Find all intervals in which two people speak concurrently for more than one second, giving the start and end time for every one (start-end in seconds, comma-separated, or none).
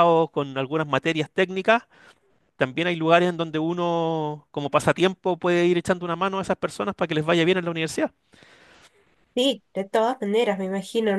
none